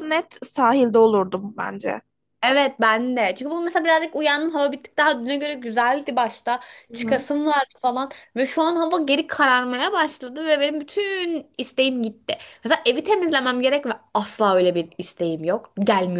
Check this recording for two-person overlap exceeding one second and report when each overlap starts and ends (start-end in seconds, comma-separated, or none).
none